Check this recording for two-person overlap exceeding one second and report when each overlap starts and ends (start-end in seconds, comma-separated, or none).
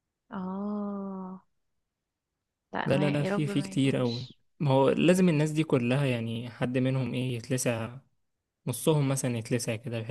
2.8-4.4